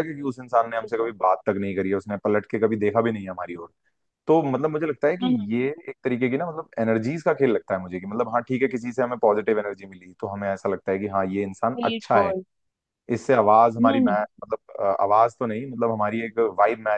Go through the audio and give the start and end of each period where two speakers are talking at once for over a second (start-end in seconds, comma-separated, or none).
none